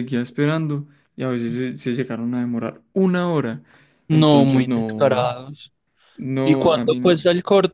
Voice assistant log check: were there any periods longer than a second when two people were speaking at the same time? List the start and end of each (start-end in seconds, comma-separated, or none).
4.1-5.3